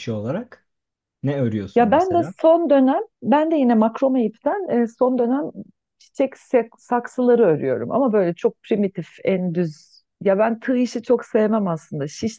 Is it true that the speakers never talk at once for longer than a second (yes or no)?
yes